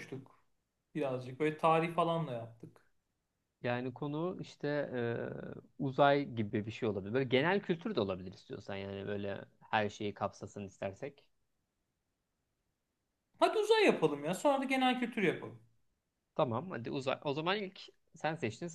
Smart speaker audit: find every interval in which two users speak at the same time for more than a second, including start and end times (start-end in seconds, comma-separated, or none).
none